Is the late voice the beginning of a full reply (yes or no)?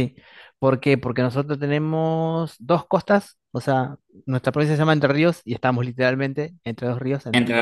no